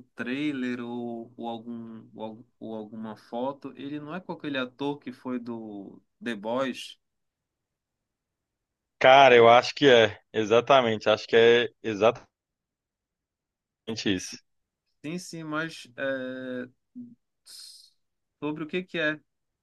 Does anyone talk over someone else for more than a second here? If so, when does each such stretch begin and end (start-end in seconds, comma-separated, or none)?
none